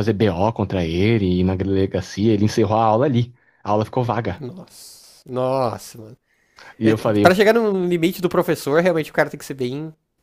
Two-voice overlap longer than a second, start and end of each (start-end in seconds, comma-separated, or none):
none